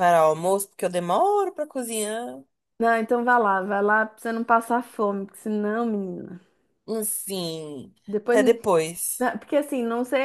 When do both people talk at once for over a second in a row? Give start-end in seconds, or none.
none